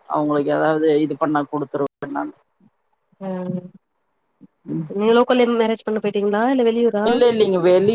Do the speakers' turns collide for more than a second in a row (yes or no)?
no